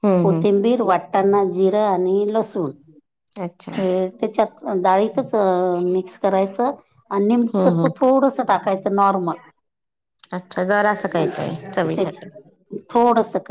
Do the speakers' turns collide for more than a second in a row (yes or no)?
no